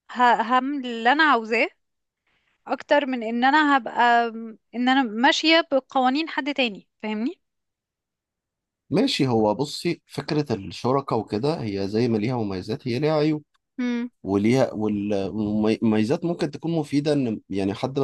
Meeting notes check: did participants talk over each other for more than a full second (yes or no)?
no